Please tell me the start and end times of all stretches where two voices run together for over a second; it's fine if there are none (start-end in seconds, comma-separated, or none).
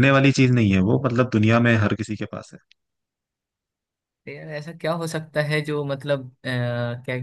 none